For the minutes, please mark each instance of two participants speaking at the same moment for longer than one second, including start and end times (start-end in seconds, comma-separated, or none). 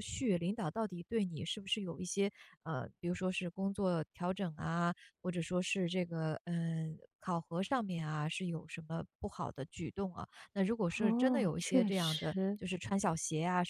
11.0-12.6